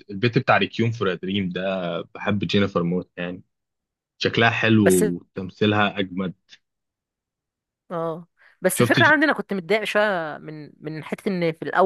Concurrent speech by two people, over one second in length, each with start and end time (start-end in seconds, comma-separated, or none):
none